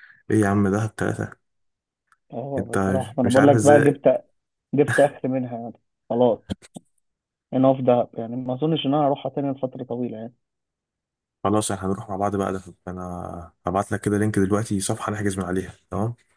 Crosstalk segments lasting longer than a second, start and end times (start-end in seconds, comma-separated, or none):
2.6-4.0